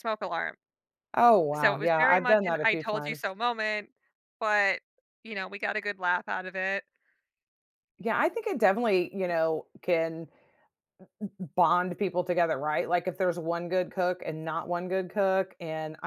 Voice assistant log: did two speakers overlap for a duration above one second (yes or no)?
yes